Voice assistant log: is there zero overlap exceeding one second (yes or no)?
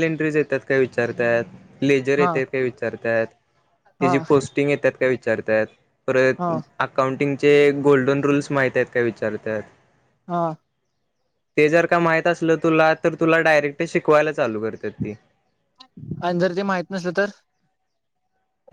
yes